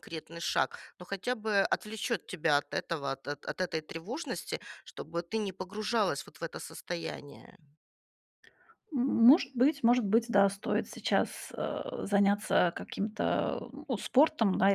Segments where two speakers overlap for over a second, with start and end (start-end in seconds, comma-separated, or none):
none